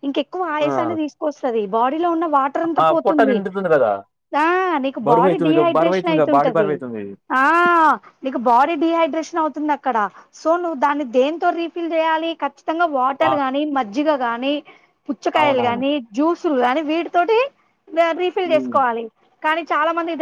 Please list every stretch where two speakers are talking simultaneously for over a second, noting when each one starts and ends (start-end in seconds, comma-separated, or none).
5.1-6.7